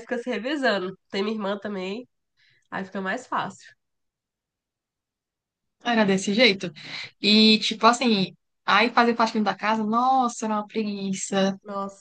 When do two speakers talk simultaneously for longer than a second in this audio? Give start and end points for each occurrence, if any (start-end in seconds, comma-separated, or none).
none